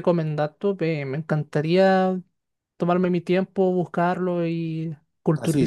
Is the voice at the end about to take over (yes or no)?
yes